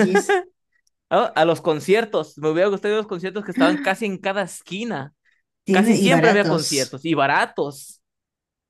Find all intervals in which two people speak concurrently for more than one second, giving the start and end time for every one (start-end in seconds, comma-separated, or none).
5.7-7.0